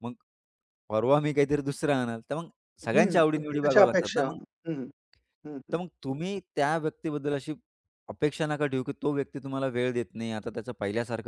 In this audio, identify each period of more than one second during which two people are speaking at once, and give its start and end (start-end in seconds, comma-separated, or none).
2.9-4.4